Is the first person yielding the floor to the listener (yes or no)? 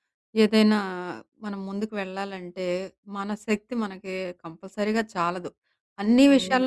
no